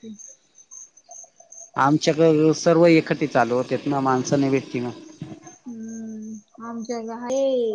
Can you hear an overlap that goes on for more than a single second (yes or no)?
no